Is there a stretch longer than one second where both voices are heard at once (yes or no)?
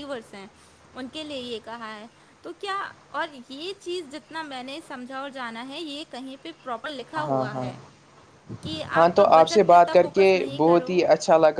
yes